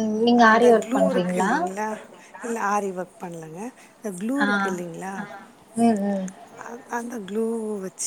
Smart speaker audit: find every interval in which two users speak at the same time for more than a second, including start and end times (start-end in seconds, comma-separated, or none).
none